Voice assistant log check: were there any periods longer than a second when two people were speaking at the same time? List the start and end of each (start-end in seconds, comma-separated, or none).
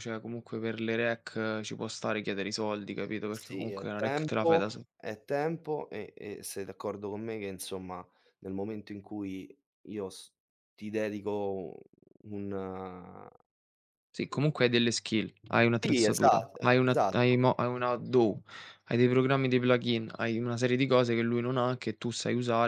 3.3-4.6, 15.8-17.5